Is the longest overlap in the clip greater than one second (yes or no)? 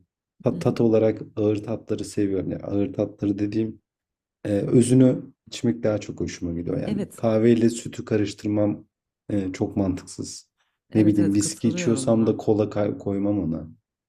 yes